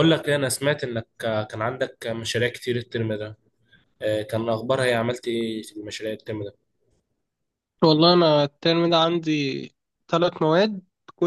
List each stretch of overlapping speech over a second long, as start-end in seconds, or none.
none